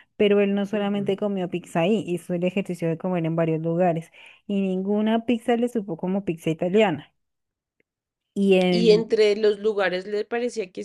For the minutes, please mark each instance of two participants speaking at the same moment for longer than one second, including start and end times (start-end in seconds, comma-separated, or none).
none